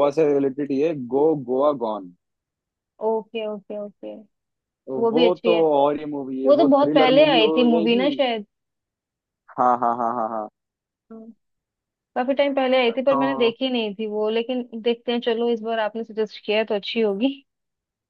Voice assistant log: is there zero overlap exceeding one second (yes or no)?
no